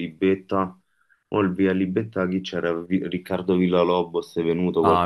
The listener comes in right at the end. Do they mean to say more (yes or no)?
yes